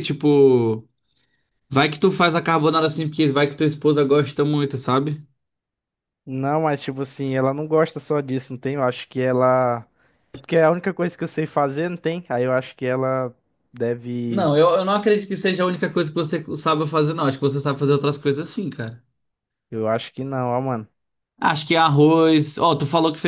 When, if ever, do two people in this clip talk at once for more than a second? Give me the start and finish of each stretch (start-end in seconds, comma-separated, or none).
none